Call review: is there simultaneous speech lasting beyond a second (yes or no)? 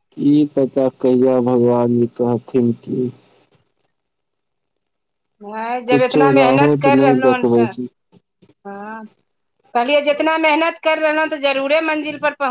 yes